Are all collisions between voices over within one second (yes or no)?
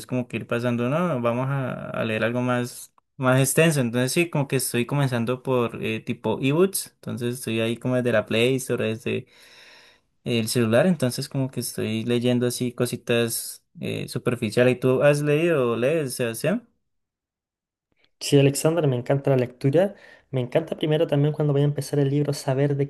yes